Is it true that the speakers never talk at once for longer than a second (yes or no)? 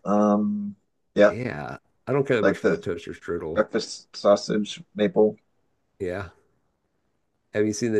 yes